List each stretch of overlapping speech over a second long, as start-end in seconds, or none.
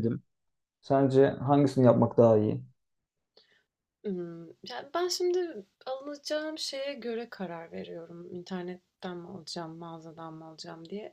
none